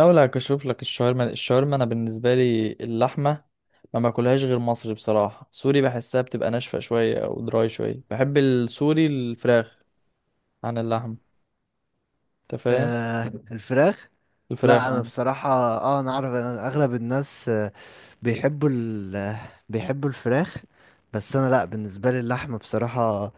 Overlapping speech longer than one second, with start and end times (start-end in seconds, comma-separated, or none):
none